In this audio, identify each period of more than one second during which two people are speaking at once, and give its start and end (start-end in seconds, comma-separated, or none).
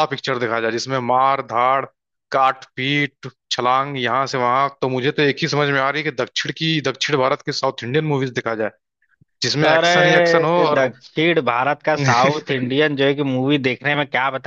9.6-10.9